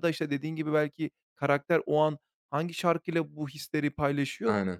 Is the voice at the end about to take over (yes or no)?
no